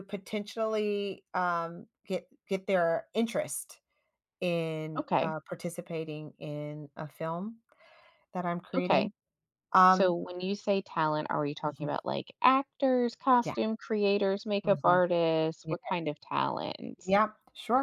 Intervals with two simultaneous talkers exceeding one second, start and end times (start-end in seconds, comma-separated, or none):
none